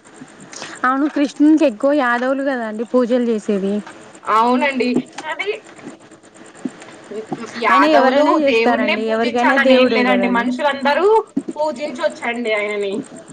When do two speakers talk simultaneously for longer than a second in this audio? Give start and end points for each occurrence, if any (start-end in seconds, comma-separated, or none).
7.7-10.4